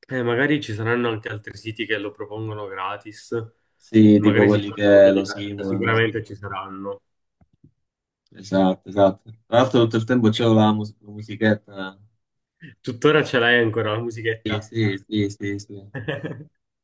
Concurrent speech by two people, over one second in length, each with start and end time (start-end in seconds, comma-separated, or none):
4.1-6.1